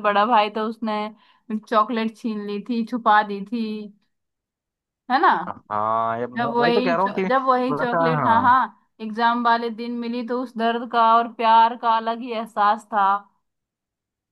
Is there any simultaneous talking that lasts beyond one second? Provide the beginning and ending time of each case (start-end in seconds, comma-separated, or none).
6.4-8.0